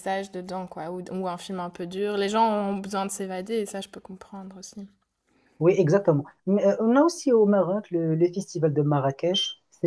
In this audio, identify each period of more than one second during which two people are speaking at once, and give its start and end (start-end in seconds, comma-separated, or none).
none